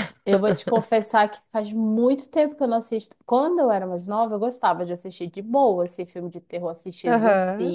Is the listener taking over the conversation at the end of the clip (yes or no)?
no